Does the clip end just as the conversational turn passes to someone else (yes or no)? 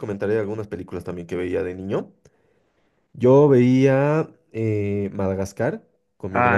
yes